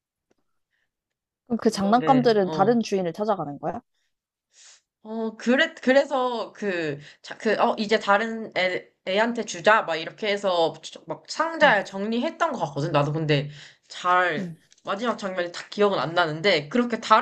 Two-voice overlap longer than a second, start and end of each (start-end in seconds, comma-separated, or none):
1.5-2.8